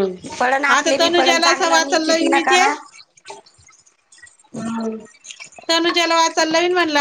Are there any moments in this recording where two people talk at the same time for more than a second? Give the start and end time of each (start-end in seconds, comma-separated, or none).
0.8-2.6